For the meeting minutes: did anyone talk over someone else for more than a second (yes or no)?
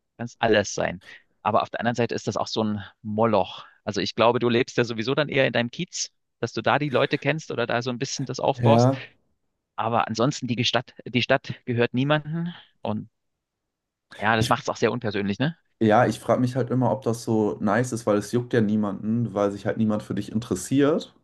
no